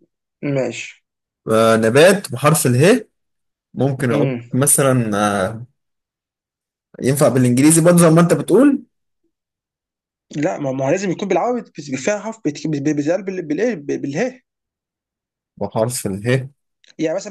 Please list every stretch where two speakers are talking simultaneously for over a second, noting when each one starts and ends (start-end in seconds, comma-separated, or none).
none